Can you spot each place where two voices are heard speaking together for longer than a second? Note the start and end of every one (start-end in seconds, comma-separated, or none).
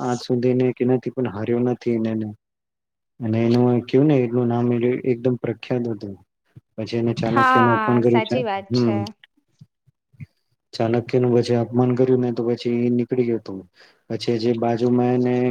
7.4-9.0